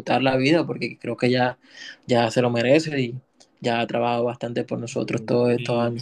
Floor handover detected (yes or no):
yes